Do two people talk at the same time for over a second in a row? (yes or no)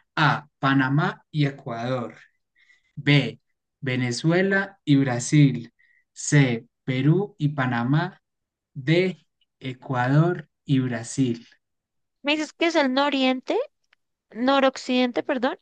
no